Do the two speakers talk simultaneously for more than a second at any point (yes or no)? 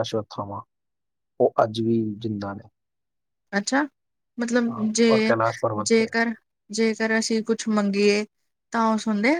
no